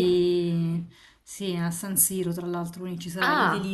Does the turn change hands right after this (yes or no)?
yes